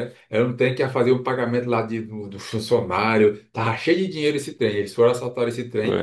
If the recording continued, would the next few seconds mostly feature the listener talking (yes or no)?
no